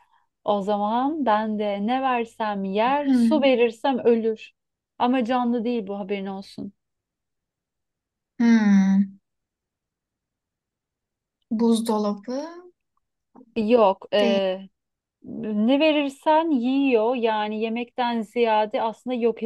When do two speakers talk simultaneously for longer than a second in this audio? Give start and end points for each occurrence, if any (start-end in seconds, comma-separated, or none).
none